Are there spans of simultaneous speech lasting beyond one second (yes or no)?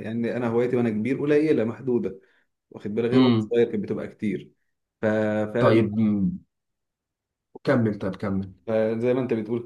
no